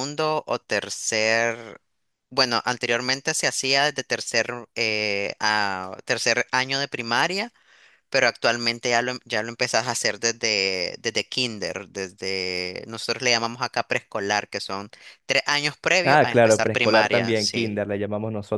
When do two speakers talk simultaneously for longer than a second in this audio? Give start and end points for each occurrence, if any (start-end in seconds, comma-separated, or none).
16.1-17.8